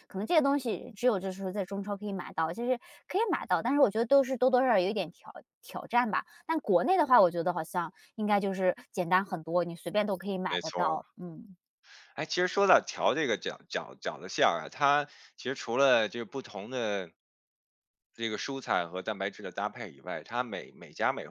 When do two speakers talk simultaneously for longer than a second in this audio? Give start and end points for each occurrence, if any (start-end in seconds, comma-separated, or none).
none